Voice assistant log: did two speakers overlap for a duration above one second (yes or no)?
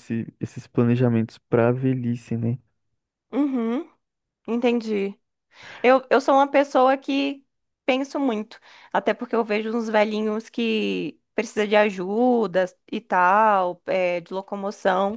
no